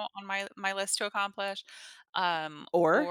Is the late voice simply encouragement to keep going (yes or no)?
yes